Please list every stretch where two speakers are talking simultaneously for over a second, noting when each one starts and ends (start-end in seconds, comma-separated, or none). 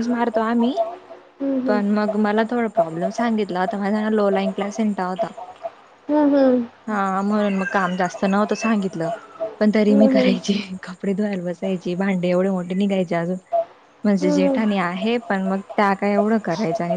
none